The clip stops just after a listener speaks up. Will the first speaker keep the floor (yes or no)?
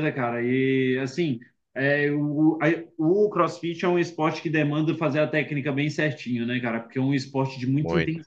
yes